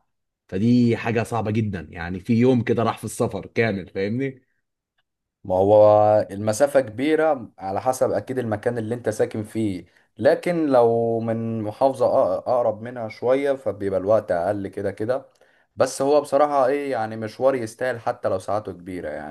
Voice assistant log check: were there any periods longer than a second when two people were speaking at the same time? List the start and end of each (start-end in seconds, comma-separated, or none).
none